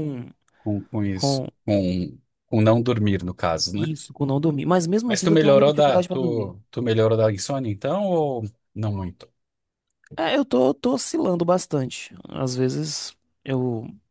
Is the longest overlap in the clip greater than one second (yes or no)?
yes